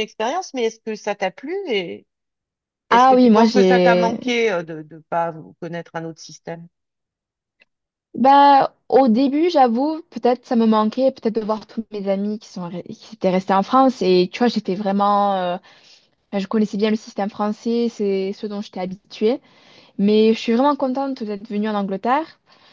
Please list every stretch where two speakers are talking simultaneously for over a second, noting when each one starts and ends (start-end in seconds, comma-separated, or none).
2.9-4.2